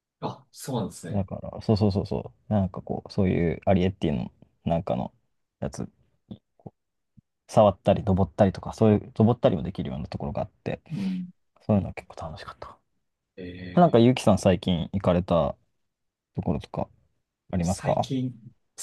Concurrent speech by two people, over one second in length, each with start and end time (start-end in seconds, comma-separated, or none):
none